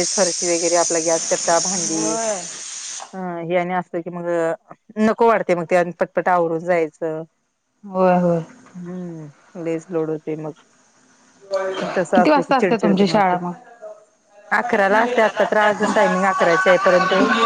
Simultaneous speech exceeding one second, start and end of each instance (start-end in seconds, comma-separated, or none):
12.2-13.4